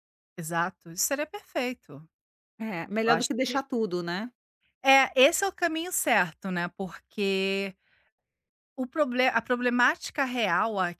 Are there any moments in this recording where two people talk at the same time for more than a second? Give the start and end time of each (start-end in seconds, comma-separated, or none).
none